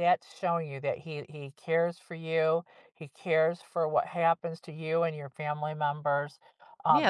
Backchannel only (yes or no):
no